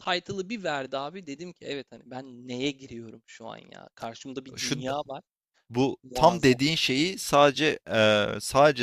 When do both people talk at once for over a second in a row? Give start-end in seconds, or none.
none